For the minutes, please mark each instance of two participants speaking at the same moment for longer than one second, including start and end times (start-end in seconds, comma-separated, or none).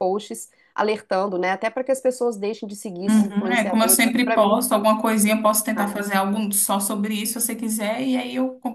3.1-4.6